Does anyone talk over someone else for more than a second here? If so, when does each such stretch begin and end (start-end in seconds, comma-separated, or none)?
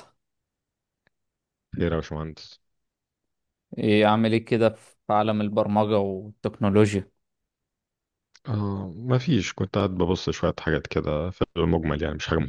none